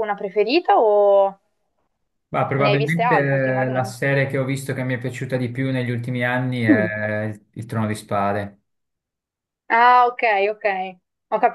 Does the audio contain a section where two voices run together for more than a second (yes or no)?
yes